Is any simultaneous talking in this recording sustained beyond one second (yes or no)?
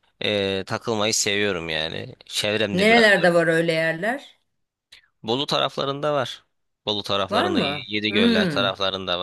yes